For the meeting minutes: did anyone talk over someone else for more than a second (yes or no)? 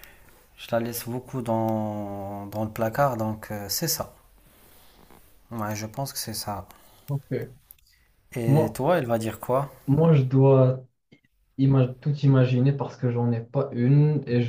no